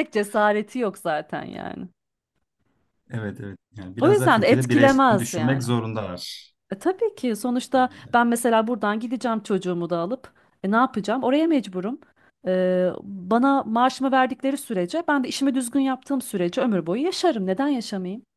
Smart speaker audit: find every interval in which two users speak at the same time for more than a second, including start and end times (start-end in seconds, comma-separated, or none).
4.0-5.7